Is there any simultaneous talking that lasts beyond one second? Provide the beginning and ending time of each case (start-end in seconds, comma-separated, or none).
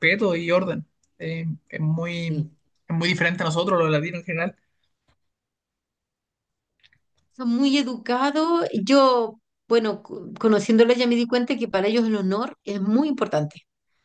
none